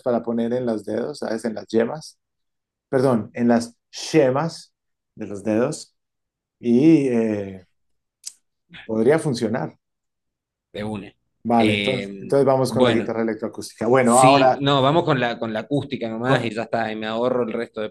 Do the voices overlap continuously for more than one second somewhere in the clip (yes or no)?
yes